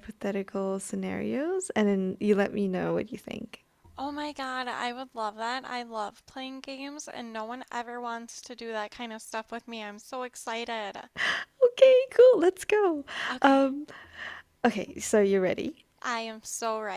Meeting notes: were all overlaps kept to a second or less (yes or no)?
yes